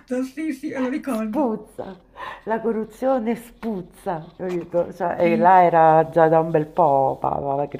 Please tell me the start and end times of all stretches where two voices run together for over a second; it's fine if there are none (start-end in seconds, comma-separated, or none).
none